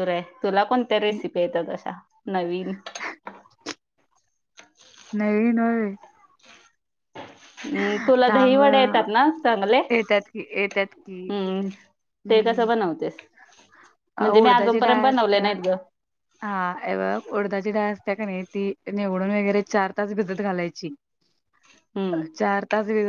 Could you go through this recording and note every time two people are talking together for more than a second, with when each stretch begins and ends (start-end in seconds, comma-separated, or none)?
14.2-15.6